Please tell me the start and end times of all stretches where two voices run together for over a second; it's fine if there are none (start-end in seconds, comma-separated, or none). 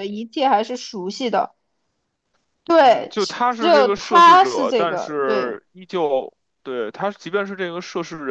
2.8-5.6